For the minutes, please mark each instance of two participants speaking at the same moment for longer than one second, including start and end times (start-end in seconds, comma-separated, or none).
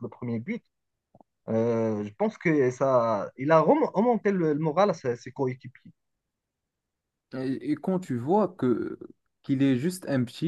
none